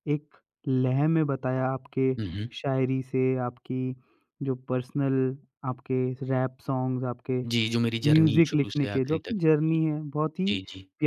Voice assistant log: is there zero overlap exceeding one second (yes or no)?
no